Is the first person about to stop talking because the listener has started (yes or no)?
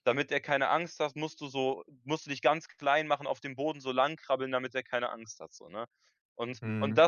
no